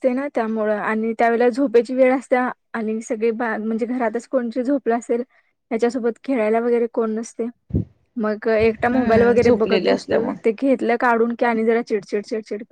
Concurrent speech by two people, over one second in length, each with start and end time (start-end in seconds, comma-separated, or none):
8.9-10.6